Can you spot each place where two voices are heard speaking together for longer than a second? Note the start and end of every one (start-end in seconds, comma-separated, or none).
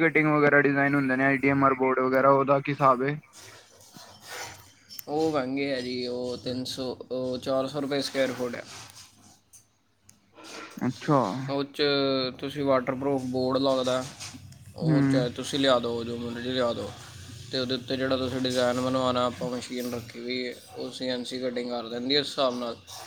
none